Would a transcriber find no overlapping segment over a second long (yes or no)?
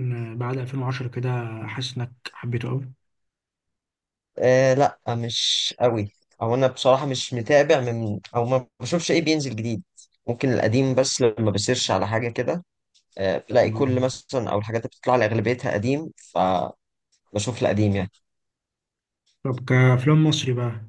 yes